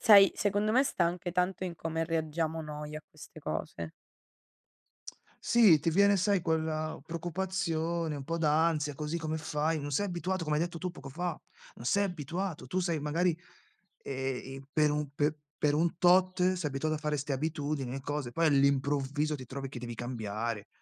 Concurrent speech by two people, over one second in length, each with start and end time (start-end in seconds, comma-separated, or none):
none